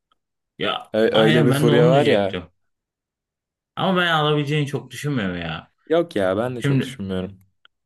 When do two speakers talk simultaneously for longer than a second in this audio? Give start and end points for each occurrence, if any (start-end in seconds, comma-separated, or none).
0.9-2.4